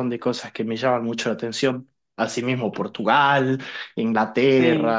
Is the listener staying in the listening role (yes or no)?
yes